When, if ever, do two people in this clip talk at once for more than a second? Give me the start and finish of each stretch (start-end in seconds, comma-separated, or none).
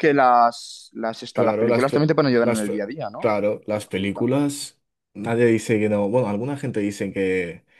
1.3-3.3